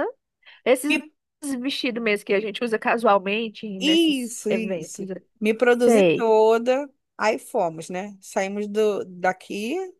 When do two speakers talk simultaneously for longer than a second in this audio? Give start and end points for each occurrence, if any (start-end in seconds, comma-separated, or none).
3.8-5.0